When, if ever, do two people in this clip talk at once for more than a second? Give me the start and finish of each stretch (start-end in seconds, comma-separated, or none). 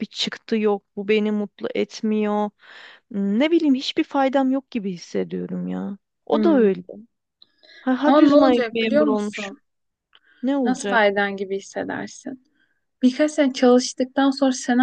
8.0-9.6